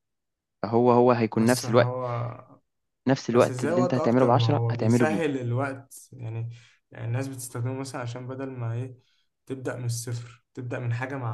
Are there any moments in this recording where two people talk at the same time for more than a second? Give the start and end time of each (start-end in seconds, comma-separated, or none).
3.3-5.2